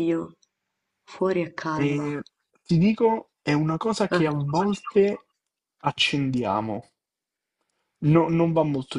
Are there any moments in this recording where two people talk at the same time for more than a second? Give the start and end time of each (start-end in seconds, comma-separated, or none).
none